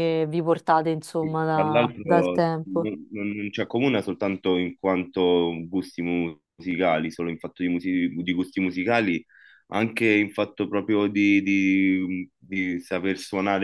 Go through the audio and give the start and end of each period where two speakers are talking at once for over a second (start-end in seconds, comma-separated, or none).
1.2-2.9